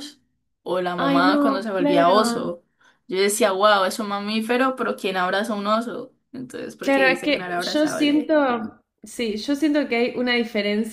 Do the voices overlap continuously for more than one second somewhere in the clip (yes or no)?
yes